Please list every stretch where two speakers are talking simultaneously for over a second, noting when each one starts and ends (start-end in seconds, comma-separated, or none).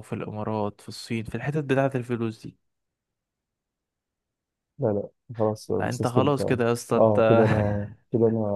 5.8-7.2